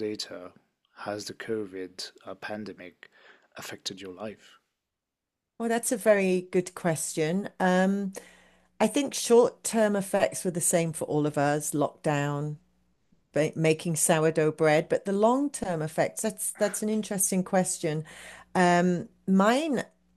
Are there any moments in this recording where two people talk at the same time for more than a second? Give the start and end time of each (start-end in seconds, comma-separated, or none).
none